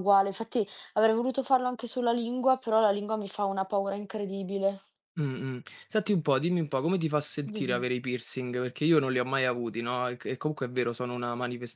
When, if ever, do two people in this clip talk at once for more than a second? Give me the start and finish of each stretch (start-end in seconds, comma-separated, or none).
none